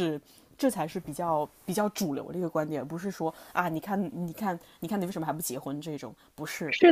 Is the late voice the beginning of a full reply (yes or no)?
yes